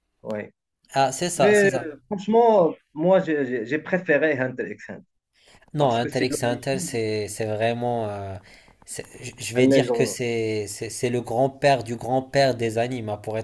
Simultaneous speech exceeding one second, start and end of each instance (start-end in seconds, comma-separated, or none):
5.8-7.0